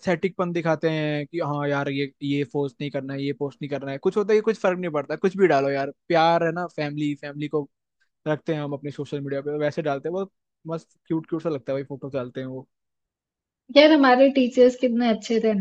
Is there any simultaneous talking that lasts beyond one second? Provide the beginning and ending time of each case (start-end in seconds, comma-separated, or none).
none